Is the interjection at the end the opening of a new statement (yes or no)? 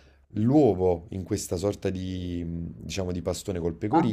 no